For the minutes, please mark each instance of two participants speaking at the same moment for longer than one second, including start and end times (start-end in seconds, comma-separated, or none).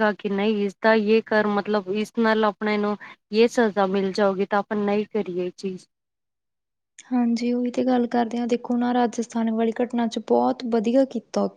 none